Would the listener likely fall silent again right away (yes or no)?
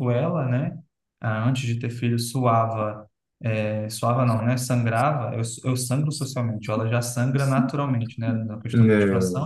yes